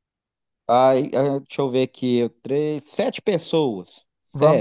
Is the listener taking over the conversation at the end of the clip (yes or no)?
yes